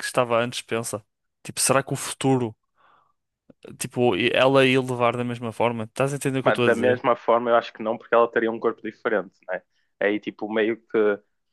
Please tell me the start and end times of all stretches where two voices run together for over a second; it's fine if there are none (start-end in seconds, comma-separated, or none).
none